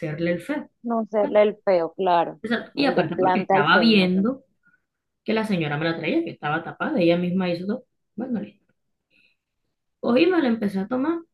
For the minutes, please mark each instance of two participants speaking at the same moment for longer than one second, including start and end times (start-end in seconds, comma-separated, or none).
2.8-4.1